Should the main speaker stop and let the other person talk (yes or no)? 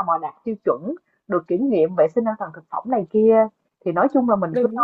no